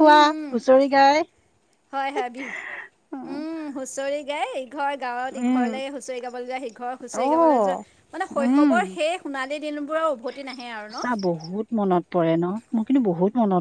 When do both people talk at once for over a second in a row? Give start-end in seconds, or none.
none